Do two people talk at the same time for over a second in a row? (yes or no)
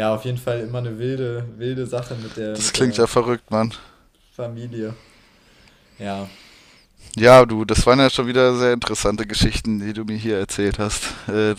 no